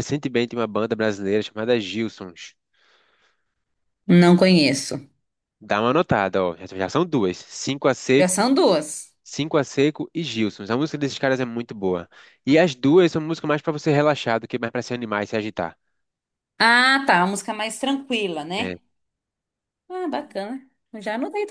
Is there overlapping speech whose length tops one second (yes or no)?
no